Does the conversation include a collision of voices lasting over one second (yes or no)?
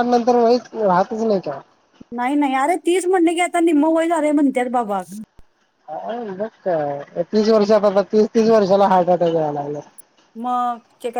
no